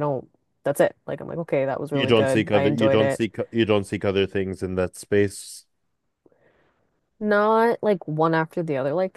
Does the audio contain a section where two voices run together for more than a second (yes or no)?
yes